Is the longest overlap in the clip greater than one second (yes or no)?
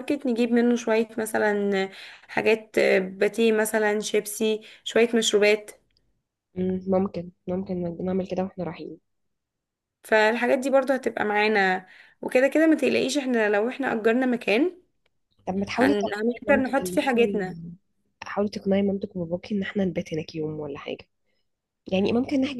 yes